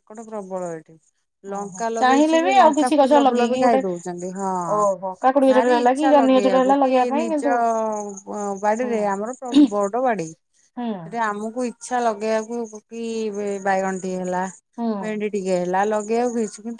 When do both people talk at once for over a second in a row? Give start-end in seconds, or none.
1.5-3.8, 5.5-7.5